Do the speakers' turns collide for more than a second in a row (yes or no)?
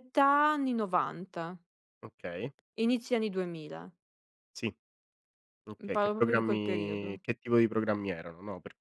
yes